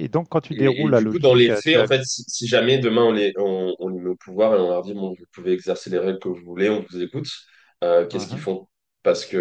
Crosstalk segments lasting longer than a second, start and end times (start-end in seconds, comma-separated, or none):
0.5-1.9